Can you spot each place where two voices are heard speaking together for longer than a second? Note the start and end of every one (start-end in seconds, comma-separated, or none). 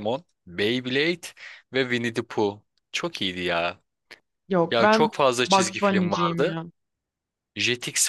4.7-6.5